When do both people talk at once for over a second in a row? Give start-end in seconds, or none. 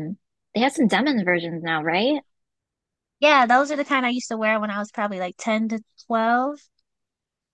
none